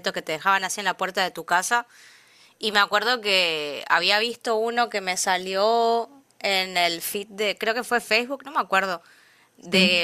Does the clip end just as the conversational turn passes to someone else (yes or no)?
no